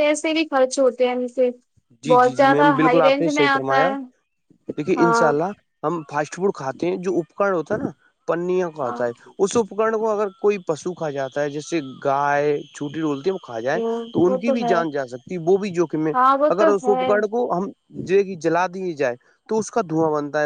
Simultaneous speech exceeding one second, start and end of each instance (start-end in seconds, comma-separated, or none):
2.1-3.9